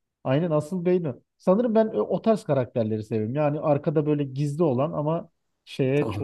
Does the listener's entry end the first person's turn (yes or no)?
yes